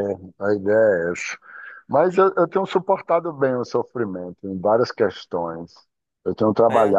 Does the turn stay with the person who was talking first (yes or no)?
yes